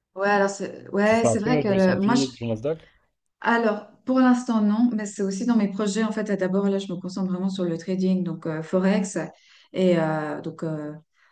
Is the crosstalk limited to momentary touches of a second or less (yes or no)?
no